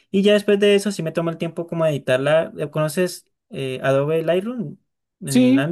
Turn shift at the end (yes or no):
yes